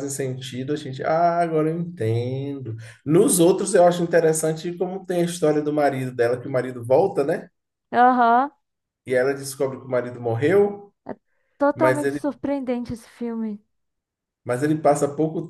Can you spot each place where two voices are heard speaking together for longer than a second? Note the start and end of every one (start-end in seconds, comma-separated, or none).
none